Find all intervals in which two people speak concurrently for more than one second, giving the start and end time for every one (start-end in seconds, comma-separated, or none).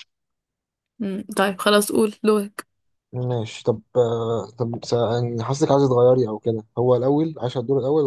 none